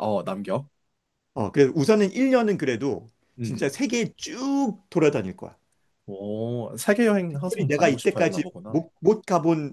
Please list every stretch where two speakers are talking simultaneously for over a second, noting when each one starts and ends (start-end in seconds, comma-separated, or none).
7.3-8.8